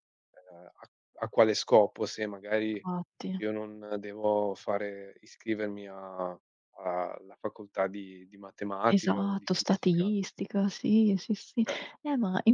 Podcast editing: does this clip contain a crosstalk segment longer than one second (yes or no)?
yes